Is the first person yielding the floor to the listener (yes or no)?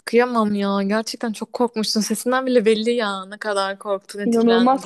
yes